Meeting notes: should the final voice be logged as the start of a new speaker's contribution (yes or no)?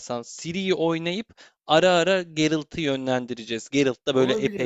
yes